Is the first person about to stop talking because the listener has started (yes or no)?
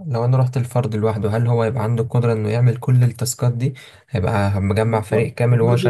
yes